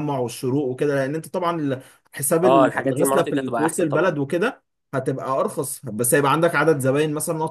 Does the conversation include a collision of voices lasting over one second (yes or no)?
yes